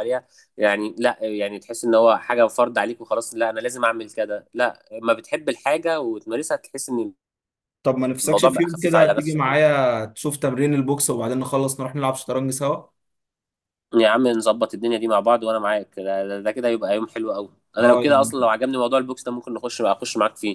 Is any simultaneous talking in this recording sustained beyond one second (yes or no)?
yes